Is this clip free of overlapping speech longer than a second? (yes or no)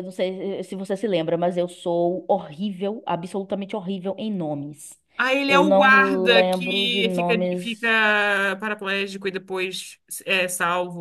no